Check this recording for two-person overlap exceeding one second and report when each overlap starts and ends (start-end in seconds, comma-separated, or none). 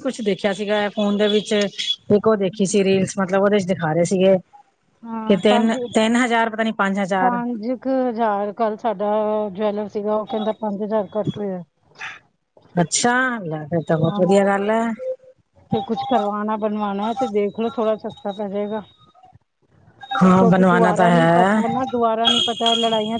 20.4-21.6